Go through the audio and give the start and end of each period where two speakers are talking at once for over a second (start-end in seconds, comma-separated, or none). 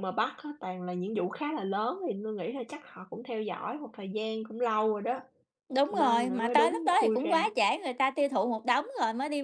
5.9-7.4